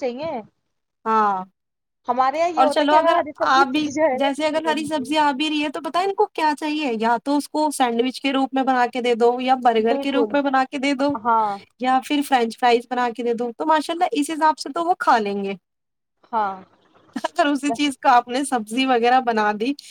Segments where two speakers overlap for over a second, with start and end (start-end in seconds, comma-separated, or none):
2.6-5.1